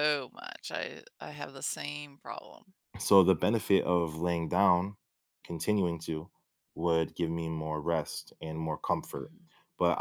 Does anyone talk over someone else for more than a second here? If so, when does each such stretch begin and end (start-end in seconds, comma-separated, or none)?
none